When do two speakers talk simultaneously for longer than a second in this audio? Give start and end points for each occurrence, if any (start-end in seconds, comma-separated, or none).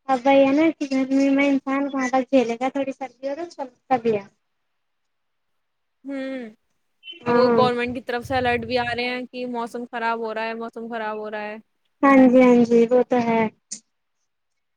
none